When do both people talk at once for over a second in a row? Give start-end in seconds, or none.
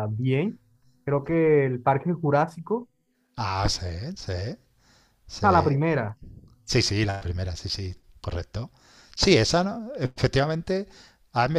none